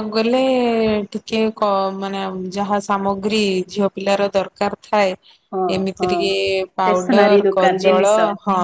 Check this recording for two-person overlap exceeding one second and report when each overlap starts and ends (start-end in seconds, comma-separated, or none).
6.8-8.1